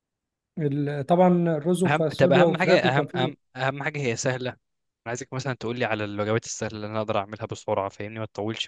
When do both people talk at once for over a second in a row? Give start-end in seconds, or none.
1.9-3.3